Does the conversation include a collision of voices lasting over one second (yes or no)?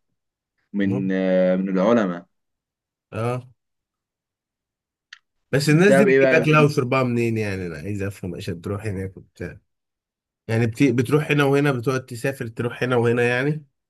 yes